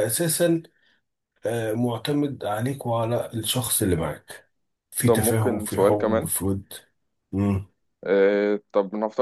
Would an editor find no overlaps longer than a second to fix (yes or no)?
no